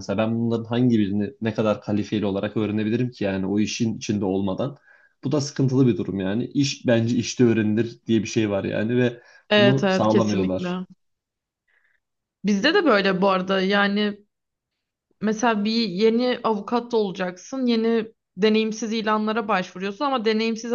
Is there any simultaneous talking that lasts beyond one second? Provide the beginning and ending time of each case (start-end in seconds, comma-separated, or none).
9.6-10.8